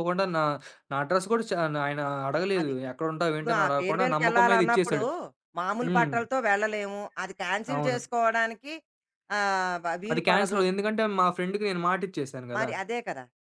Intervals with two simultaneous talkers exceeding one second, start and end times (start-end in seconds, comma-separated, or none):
3.3-5.0